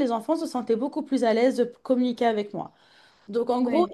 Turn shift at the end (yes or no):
no